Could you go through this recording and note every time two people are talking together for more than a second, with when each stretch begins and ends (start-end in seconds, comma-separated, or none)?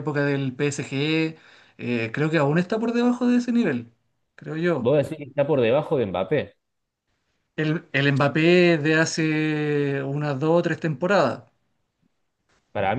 none